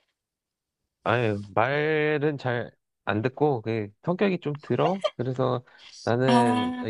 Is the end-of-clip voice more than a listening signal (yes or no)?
no